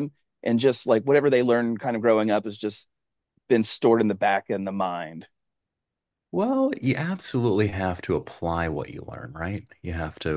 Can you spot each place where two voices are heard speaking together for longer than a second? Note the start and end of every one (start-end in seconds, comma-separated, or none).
none